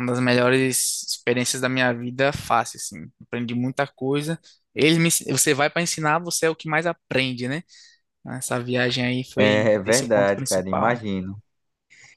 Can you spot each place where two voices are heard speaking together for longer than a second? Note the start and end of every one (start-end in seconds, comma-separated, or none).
9.4-11.0